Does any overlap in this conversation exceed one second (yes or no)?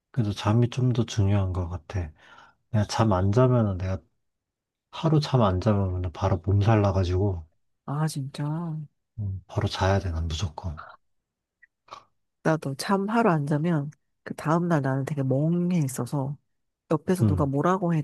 no